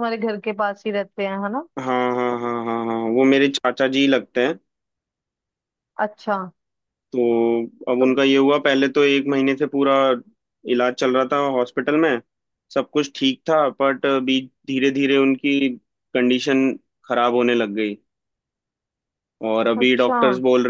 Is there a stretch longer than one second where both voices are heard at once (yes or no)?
no